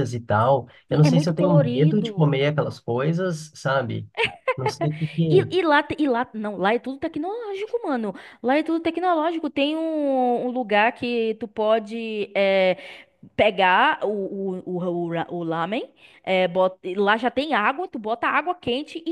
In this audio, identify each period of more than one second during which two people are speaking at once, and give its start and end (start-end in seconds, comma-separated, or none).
0.9-2.4